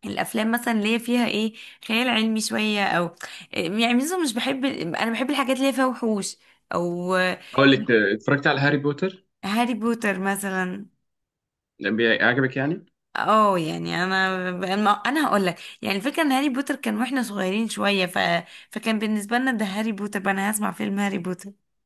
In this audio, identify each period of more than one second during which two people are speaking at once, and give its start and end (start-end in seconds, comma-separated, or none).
none